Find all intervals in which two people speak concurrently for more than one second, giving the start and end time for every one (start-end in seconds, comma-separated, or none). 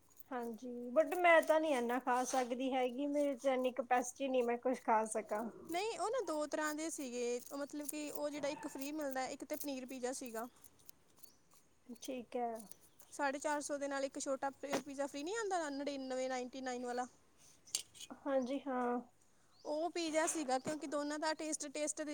none